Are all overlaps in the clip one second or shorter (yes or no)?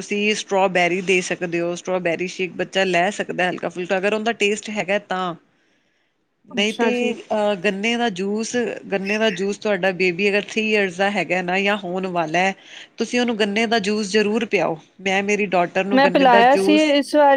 yes